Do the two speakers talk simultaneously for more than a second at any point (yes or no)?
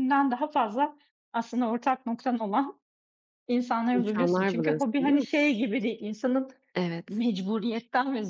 yes